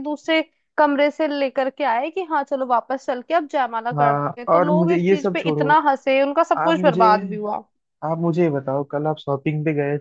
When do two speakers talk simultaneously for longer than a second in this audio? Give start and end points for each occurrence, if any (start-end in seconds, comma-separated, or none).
3.9-5.7